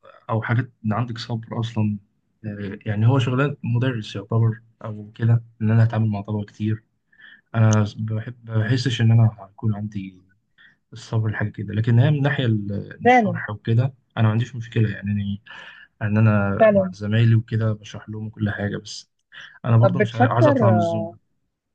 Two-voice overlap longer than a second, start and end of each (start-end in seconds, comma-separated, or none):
19.8-21.2